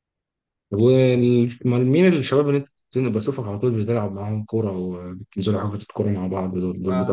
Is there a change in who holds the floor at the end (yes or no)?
yes